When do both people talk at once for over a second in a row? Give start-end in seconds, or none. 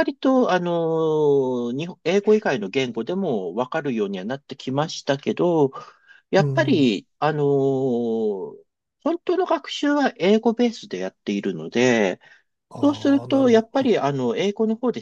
12.8-14.0